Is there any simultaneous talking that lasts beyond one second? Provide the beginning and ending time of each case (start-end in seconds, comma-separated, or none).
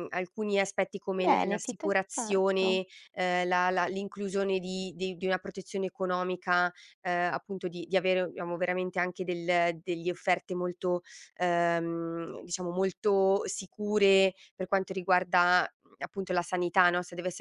1.2-2.8